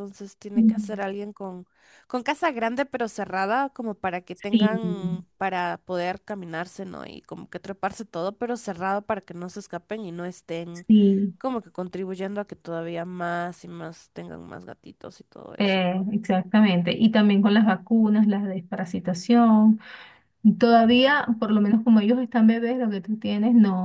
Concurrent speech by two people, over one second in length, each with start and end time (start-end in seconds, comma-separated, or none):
none